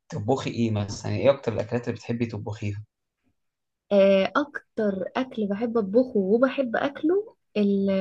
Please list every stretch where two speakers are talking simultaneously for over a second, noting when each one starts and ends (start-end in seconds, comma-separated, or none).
none